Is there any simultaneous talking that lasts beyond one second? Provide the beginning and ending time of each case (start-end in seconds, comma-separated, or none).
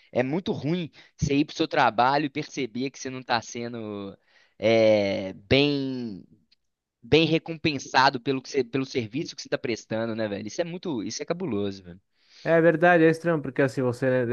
none